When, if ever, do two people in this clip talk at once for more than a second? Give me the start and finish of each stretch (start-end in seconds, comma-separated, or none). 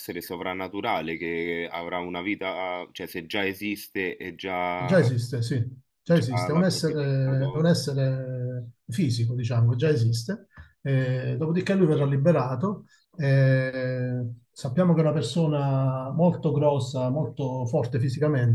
6.0-7.7